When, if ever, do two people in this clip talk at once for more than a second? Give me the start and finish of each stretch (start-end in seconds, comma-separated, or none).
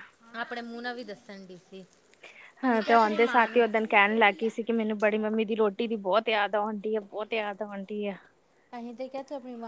2.6-4.5